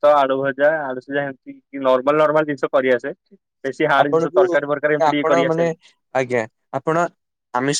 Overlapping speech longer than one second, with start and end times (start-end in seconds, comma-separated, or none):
4.0-5.7